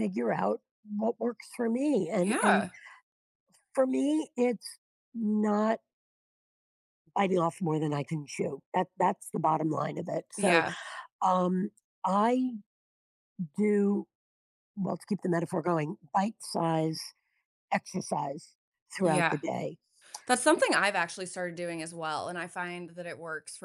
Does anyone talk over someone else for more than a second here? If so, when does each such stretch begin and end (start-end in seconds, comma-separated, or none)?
none